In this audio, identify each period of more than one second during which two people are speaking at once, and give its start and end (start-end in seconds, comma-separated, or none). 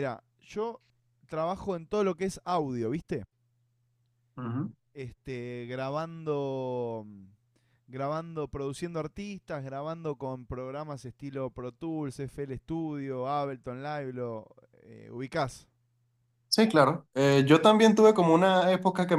none